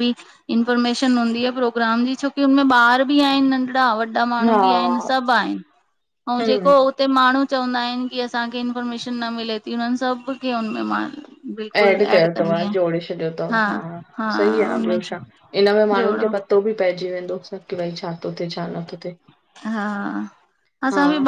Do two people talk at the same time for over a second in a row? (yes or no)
no